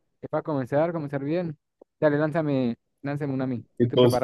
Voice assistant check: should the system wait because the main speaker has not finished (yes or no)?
no